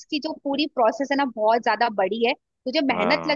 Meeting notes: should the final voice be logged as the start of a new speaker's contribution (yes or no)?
no